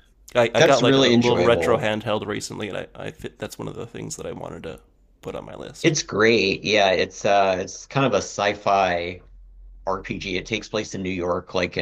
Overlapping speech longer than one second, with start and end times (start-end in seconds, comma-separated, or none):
0.6-1.9